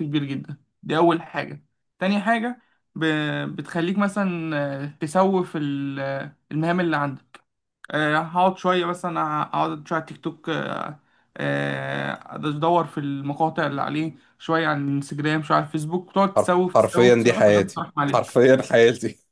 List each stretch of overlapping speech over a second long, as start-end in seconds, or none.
16.4-18.4